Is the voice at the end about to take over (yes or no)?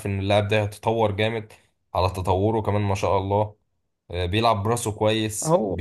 yes